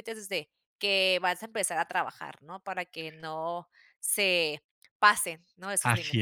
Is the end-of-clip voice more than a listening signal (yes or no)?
yes